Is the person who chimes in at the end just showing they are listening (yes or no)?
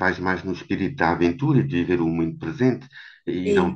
yes